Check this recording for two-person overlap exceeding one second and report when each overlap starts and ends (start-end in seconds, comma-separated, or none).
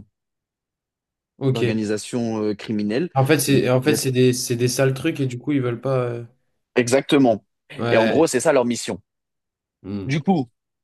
none